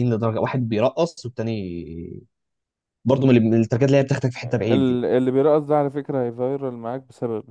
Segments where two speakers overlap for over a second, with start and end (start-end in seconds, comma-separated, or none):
none